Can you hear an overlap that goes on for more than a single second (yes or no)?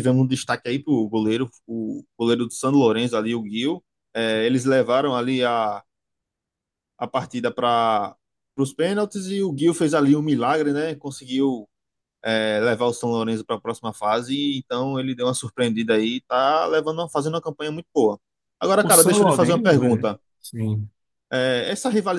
yes